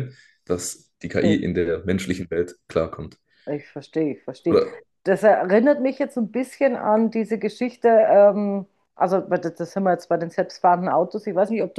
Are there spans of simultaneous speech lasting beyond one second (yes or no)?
no